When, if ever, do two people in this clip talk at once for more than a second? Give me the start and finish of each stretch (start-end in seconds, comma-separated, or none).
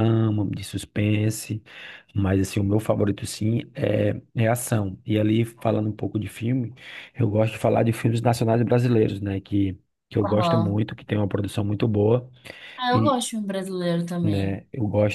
none